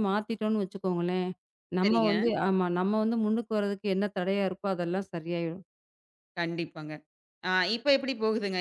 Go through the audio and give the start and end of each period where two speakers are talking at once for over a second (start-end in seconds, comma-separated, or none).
none